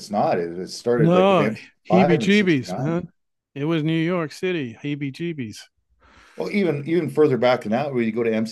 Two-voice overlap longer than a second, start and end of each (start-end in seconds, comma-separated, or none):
0.9-3.1